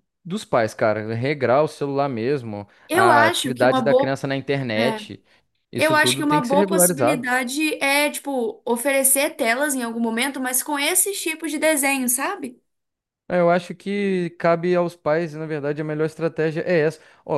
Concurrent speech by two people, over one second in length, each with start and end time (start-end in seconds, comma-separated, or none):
2.9-4.2, 5.7-7.3